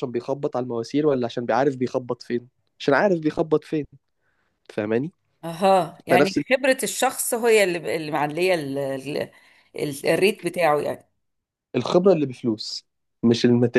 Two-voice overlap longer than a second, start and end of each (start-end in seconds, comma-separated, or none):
none